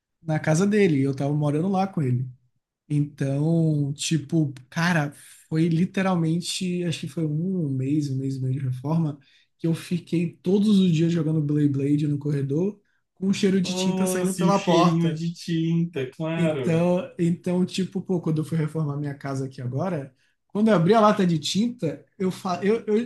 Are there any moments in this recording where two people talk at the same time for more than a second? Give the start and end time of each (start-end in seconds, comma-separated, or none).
13.6-15.2